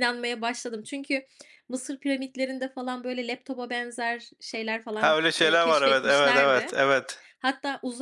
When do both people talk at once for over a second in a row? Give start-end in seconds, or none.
5.0-6.7